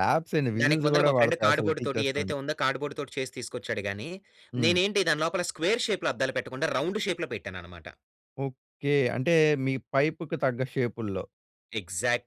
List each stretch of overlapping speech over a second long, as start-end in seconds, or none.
0.6-2.3